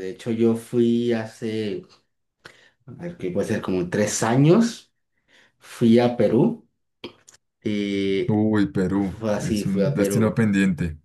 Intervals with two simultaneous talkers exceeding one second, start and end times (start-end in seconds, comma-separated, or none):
8.9-10.4